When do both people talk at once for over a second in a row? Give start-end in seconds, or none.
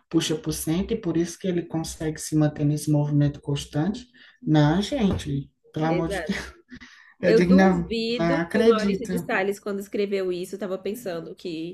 7.2-9.3